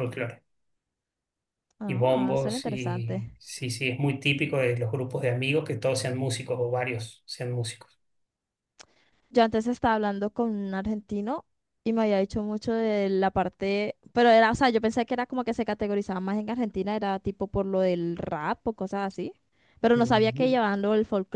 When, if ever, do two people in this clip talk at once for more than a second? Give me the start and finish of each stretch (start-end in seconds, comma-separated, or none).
1.9-3.4